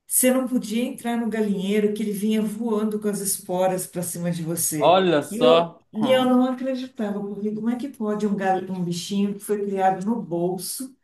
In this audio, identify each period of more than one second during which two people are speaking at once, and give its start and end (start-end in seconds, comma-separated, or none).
4.8-6.4